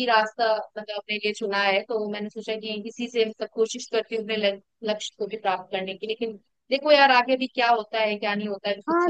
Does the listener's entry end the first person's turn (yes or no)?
yes